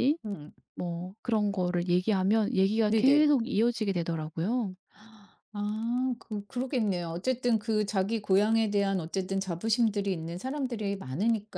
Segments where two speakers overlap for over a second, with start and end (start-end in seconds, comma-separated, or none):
none